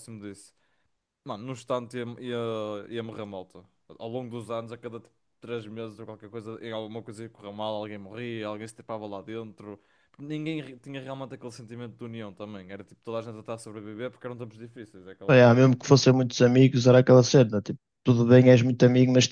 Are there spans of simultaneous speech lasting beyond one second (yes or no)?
no